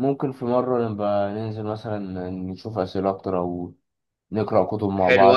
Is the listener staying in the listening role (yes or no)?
no